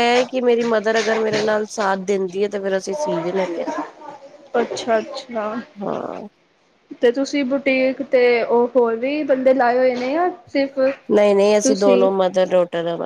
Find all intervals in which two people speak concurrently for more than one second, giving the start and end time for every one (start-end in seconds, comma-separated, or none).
none